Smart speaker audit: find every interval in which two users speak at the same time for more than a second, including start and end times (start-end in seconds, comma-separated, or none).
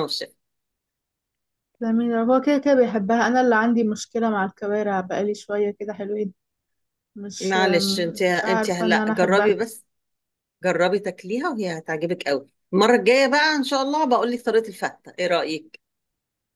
7.4-9.6